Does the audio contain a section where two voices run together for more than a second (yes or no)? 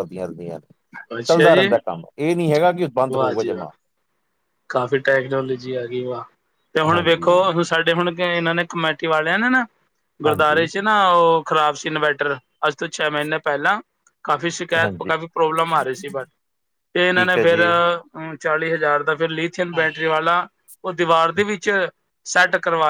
no